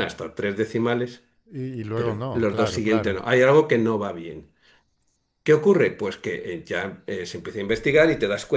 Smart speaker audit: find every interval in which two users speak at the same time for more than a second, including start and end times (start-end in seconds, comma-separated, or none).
1.9-3.2